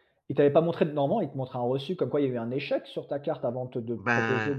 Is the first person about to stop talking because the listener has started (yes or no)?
yes